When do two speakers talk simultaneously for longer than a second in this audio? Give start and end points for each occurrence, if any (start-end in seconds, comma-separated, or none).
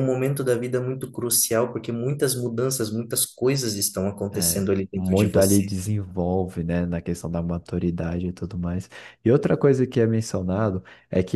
4.3-5.7